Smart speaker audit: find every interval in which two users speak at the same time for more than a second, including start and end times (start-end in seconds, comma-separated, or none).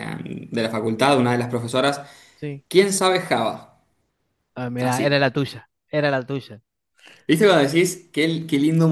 none